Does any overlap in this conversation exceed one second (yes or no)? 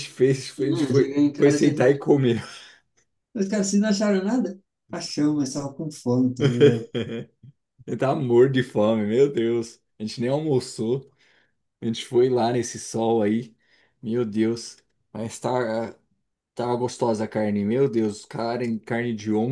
yes